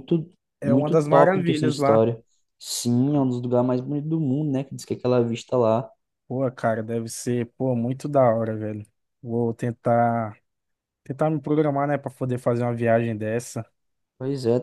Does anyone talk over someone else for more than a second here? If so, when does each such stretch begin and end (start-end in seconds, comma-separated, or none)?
0.6-2.1